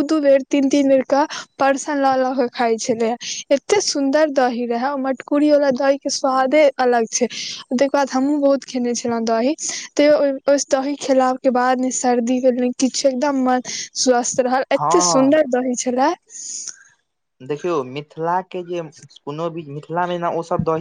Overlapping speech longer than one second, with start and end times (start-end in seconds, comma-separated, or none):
none